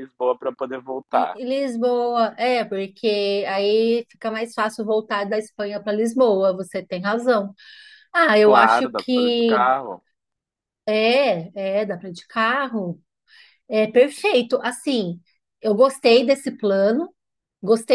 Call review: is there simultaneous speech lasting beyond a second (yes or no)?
yes